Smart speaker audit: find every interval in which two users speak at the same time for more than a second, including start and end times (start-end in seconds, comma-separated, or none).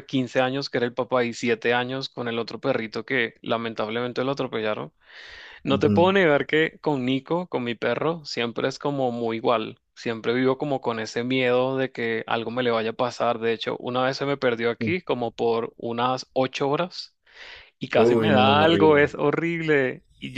17.9-19.2